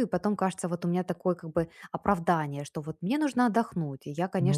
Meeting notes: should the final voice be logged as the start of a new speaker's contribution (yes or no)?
no